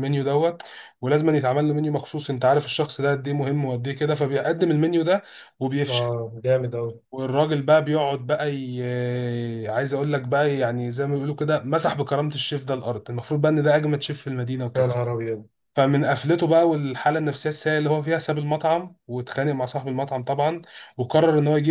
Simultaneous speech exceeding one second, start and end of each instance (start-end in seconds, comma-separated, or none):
none